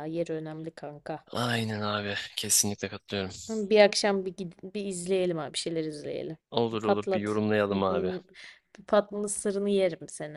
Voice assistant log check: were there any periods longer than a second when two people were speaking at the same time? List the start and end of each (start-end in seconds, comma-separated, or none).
6.5-8.1